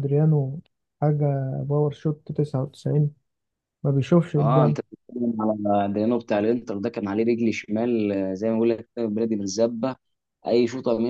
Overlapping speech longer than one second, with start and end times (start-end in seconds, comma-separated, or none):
none